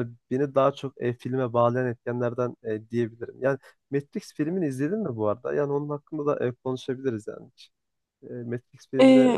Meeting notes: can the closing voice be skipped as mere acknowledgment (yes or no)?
no